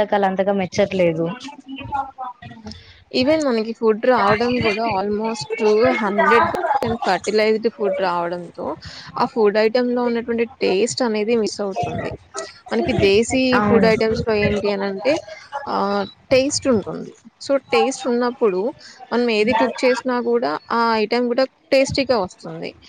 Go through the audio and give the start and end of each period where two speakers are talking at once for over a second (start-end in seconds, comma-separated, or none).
none